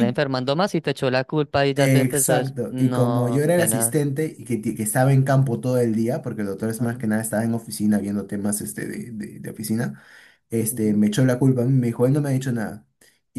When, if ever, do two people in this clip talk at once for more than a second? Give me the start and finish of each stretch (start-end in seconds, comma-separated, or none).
1.8-4.0